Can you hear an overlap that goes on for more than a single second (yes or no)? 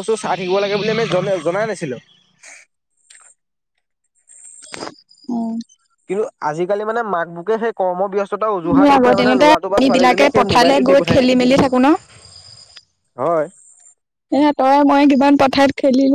yes